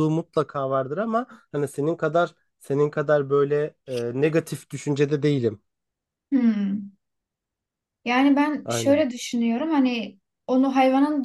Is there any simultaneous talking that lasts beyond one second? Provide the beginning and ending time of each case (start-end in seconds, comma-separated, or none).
none